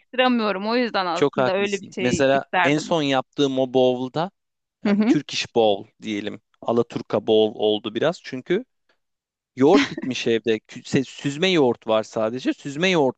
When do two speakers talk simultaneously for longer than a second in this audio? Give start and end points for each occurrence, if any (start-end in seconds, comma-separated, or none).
1.1-3.0